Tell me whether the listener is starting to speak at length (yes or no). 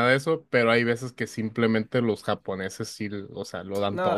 yes